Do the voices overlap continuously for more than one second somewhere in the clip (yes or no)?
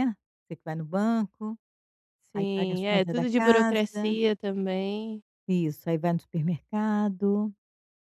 yes